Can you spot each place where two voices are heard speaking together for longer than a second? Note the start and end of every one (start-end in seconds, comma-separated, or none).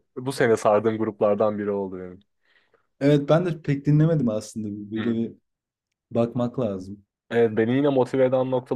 none